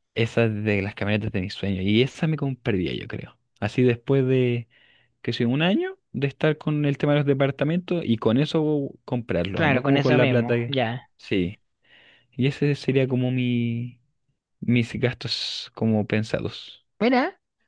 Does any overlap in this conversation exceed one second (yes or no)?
yes